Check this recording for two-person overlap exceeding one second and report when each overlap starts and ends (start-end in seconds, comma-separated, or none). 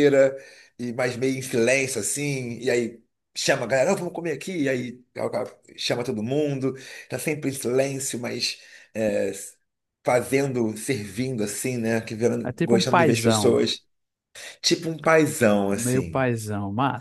12.4-13.6